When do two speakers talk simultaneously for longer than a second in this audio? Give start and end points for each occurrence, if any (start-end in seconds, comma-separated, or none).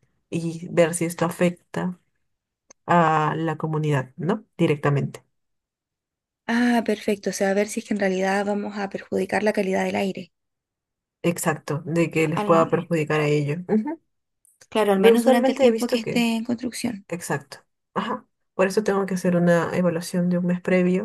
15.0-16.2